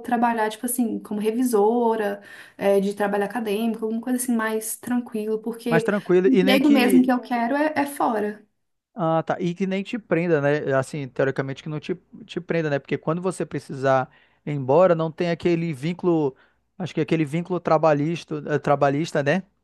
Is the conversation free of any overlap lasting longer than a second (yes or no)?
no